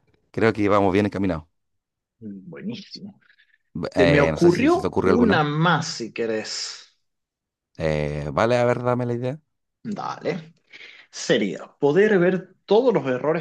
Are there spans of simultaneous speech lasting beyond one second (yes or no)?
yes